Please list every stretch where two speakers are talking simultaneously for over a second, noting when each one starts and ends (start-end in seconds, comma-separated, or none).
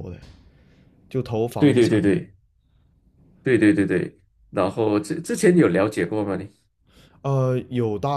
none